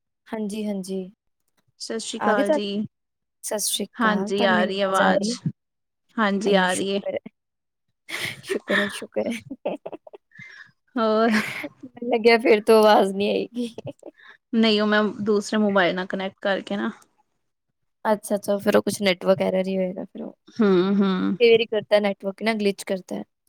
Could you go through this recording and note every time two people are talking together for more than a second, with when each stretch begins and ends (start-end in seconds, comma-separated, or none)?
4.0-5.3